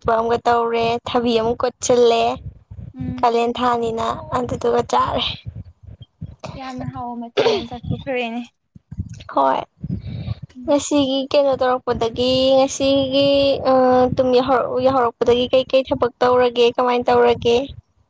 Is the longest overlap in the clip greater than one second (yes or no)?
no